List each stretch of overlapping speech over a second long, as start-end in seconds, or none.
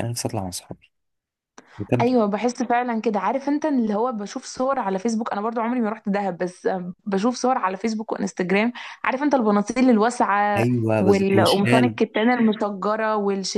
10.6-12.0